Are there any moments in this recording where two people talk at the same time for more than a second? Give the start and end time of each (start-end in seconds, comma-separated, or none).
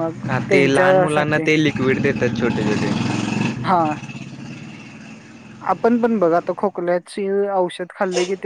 none